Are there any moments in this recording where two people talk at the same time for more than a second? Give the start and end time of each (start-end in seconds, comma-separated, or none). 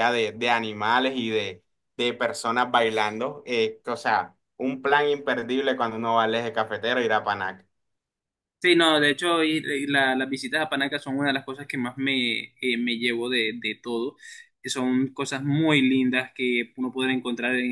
none